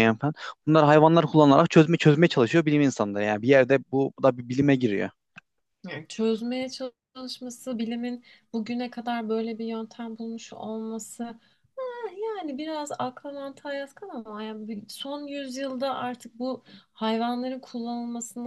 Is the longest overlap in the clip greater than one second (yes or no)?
no